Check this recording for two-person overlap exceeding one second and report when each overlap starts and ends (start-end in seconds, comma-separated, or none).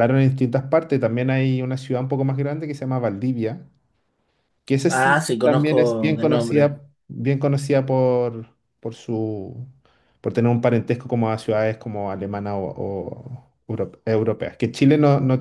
4.9-6.7